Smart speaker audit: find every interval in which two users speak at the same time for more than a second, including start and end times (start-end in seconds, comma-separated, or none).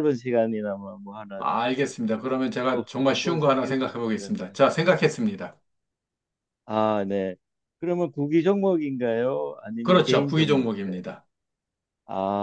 2.6-4.6, 9.8-11.0